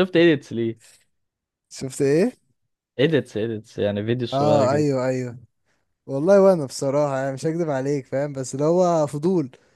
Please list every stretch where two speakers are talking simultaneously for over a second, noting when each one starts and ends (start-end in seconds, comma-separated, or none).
none